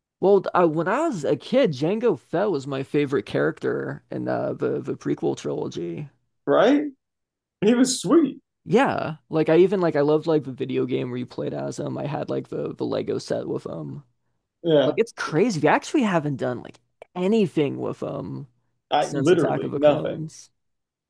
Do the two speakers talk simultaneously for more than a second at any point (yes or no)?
yes